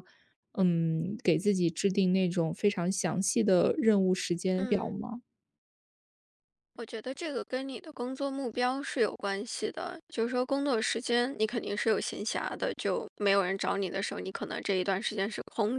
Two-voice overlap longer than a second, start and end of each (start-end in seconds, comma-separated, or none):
none